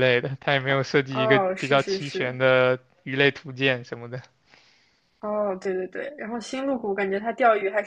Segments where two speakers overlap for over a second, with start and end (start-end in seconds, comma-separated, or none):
0.7-2.4